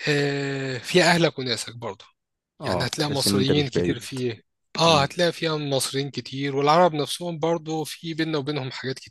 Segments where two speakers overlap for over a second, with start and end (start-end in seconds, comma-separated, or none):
2.6-4.1